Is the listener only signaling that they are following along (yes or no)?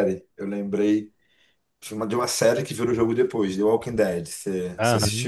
no